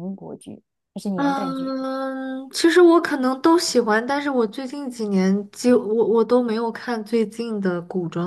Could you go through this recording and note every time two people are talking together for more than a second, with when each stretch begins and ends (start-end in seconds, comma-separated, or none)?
none